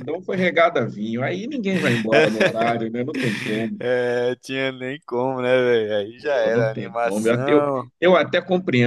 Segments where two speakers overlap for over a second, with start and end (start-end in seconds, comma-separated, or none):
6.2-7.6